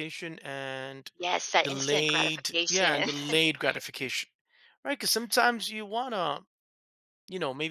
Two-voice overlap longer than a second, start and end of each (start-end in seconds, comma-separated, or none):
1.6-3.1